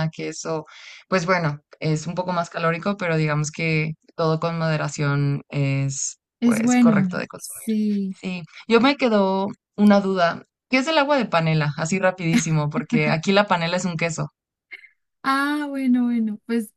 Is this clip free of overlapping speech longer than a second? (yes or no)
no